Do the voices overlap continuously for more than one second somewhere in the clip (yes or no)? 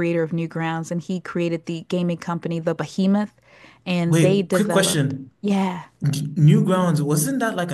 yes